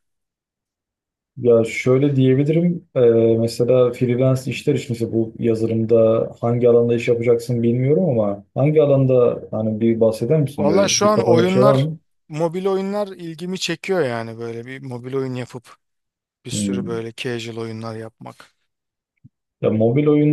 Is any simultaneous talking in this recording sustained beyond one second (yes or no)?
yes